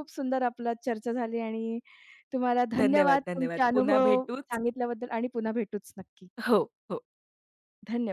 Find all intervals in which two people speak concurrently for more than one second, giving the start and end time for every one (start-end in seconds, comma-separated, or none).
2.8-4.6